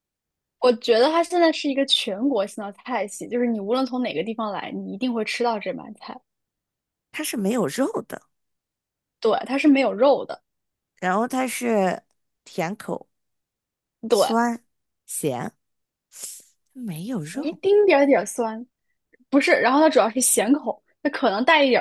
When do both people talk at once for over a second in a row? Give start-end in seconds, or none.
none